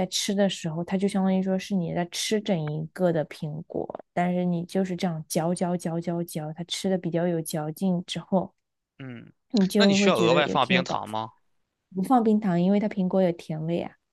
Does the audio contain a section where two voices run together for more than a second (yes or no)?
yes